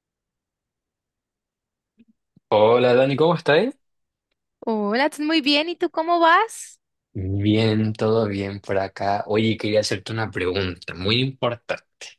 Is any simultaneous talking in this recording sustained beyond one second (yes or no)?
no